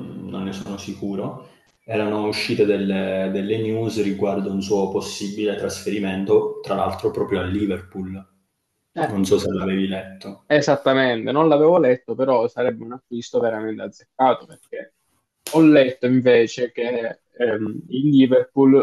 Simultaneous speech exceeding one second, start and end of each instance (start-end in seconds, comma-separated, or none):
none